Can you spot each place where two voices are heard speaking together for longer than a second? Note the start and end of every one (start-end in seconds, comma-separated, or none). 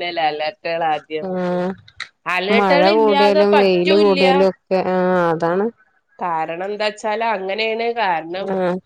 2.6-4.2